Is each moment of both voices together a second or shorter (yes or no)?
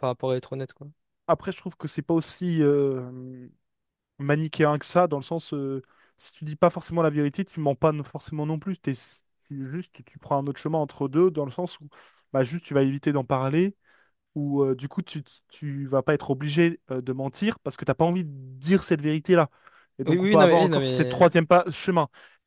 no